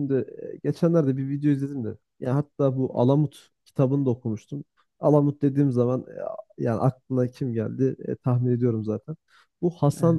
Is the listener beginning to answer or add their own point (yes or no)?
no